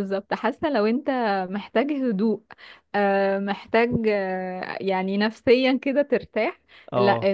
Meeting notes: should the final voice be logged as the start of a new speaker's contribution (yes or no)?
no